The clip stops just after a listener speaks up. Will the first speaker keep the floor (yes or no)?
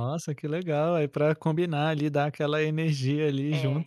no